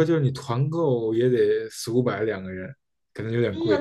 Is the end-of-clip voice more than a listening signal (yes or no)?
yes